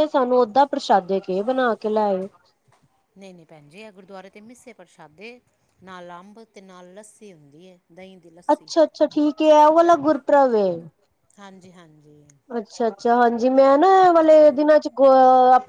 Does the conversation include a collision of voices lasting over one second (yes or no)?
no